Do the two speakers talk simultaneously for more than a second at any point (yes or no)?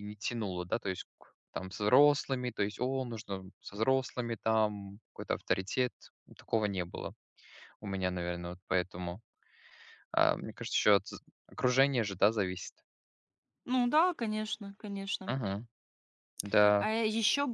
no